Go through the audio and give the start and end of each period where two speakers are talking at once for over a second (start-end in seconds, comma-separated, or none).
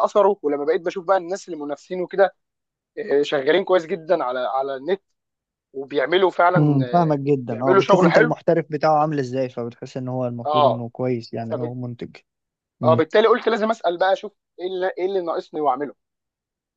6.6-8.3